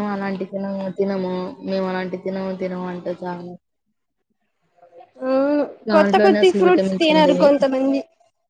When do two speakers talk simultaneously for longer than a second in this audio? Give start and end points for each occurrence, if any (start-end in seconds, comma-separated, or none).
5.9-7.5